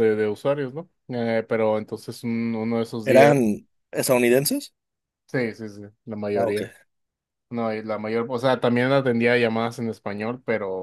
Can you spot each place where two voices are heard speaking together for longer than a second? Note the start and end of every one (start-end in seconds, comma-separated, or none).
none